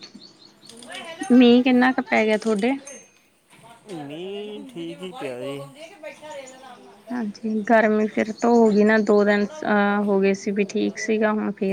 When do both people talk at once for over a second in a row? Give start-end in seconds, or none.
none